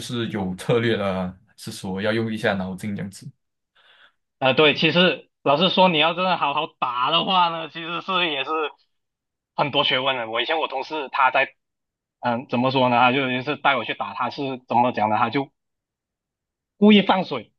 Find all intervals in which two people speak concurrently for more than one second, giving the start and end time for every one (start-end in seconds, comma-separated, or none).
none